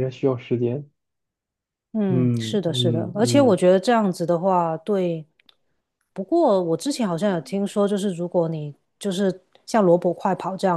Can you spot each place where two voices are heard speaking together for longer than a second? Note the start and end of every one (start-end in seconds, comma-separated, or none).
2.1-3.6